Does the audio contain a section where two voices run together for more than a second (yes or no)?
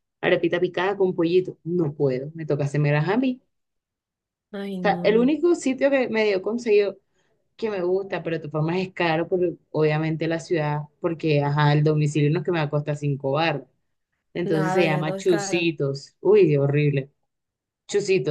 yes